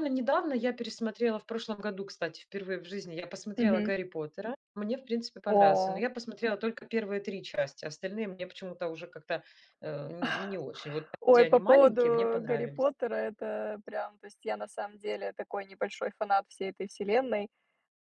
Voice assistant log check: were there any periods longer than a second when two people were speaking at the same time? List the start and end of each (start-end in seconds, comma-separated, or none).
11.2-12.9